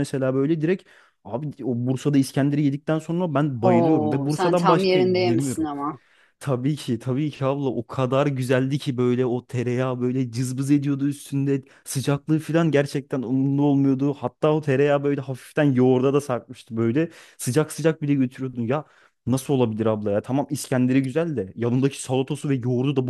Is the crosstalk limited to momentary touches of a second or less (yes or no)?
no